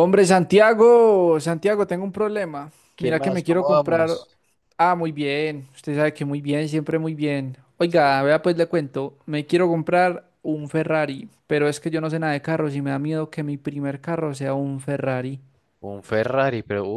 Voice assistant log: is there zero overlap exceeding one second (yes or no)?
no